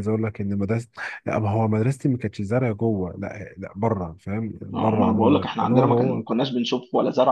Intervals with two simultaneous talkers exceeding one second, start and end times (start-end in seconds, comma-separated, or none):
4.7-6.3